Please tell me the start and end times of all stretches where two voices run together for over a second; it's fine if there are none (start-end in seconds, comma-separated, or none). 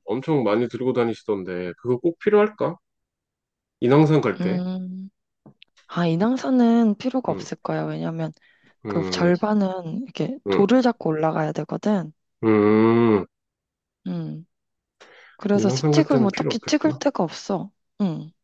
15.5-17.0